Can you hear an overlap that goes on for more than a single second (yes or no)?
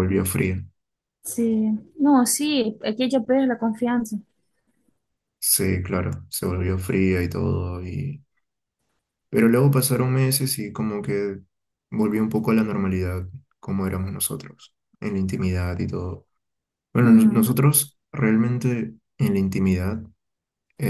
no